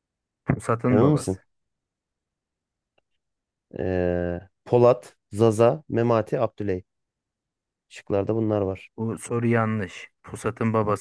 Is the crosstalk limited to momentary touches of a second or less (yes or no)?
yes